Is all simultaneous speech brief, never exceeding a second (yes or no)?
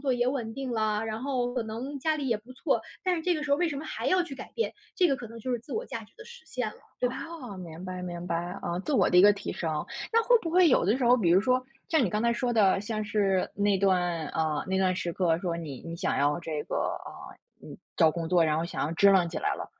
yes